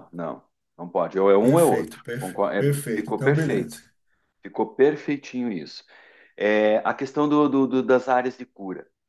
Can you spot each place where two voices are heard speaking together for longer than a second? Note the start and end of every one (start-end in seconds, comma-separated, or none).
1.4-3.8